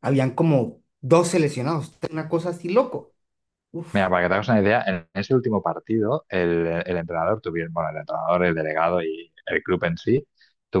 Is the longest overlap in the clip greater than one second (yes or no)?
no